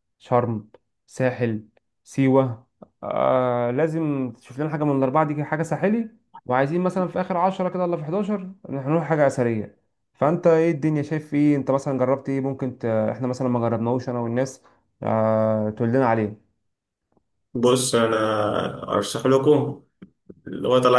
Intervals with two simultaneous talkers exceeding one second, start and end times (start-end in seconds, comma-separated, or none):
none